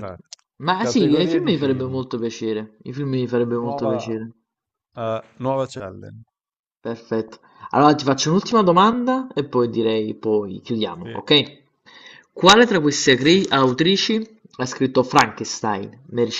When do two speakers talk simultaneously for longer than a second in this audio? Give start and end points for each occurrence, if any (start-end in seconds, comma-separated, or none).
0.8-2.0